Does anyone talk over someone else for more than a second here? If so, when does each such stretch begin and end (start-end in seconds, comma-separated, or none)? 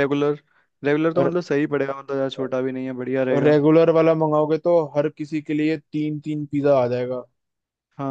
none